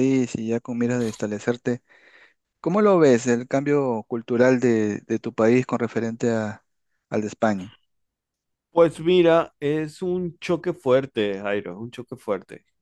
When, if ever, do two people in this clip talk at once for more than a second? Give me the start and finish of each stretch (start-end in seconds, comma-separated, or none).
none